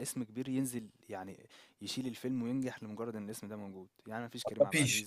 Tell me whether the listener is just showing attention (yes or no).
yes